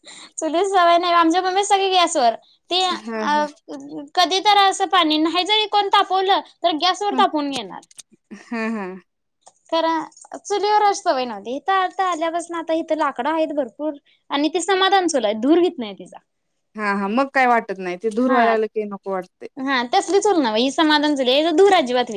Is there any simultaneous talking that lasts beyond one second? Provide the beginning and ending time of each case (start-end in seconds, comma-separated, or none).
none